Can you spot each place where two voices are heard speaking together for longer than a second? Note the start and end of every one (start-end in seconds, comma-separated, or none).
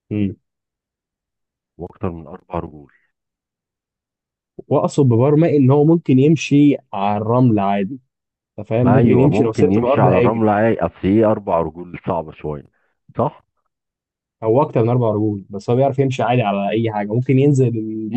8.8-10.5